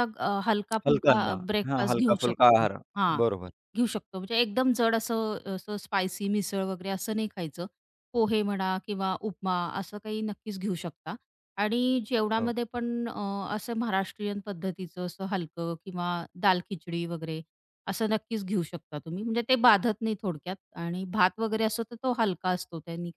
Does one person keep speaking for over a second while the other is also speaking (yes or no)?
yes